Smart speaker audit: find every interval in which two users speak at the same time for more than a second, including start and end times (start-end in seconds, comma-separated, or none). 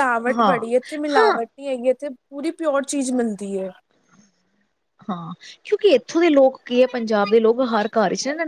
none